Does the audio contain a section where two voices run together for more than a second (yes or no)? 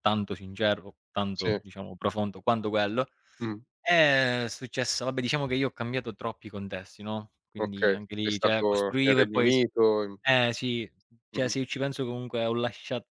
yes